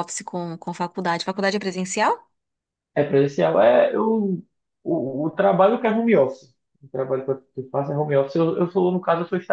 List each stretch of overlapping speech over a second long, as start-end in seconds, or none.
none